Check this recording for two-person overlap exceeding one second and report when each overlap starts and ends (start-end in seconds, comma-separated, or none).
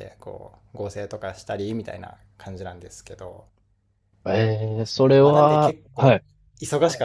4.8-6.2